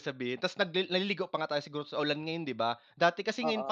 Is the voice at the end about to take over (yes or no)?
no